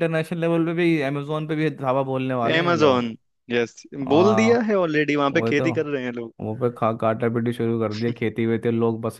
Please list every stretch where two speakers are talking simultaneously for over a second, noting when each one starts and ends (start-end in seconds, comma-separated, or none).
none